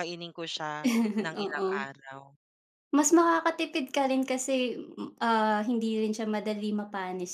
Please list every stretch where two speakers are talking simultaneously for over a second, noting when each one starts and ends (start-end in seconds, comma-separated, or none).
none